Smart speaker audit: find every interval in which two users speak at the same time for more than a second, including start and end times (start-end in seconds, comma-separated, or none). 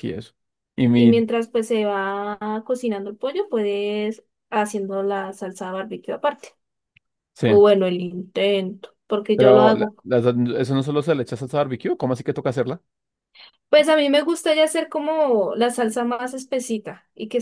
none